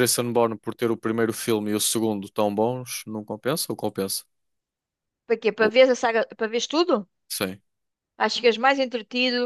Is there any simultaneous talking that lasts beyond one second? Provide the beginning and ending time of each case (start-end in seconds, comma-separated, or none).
none